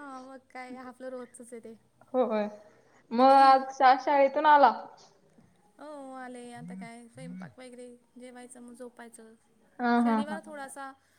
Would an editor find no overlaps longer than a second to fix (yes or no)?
yes